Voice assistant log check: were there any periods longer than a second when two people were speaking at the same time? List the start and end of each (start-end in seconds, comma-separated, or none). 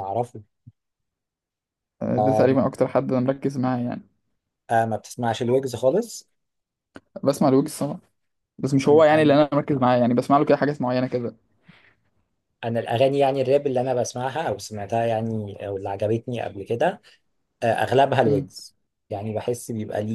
none